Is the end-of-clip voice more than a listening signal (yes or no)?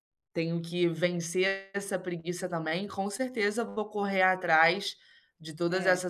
no